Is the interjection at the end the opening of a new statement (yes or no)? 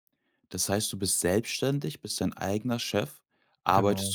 no